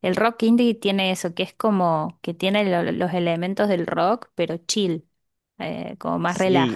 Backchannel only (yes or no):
no